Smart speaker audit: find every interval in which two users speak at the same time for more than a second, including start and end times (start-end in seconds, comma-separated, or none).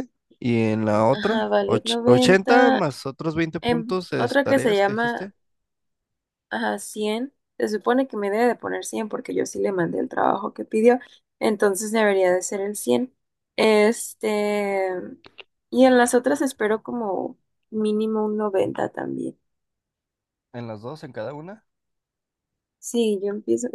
1.1-2.8, 3.6-5.3